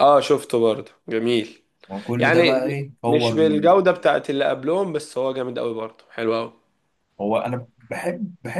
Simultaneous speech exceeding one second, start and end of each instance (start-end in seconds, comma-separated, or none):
2.2-3.8